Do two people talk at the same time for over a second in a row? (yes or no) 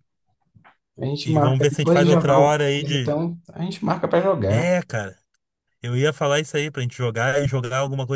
yes